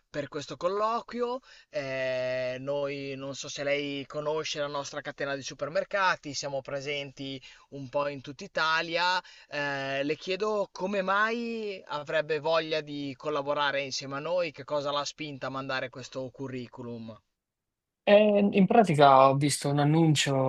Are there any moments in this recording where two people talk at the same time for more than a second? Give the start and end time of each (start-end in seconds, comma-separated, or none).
none